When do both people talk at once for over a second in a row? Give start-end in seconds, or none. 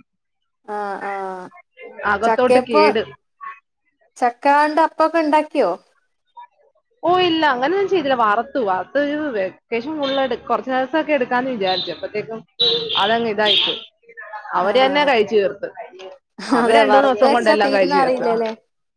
16.6-18.3